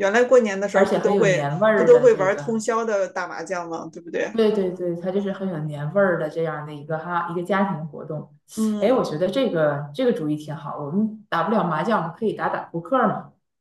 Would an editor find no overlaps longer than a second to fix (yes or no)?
no